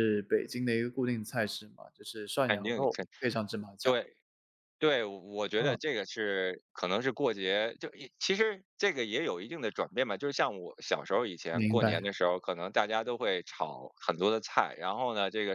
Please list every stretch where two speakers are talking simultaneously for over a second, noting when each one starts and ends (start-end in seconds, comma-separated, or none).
none